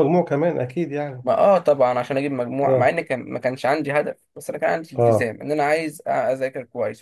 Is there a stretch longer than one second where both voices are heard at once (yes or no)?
no